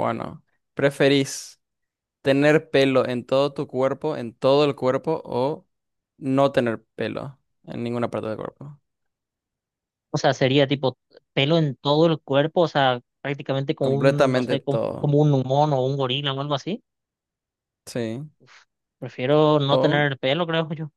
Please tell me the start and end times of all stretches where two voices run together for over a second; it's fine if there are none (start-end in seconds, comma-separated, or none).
13.8-15.2